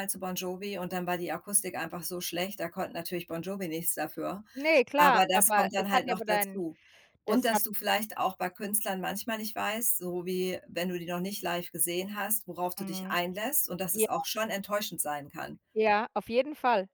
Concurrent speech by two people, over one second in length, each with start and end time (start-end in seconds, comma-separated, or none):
5.0-6.6